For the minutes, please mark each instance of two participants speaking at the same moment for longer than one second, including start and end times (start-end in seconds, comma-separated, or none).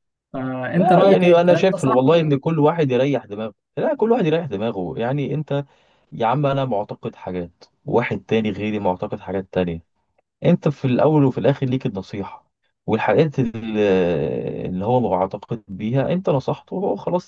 0.7-2.3